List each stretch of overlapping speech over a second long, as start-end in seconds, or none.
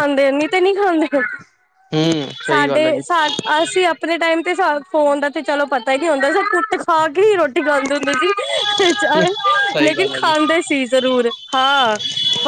none